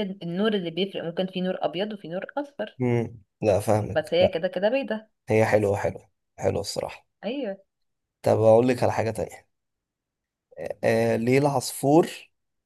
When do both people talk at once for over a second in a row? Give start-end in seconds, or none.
none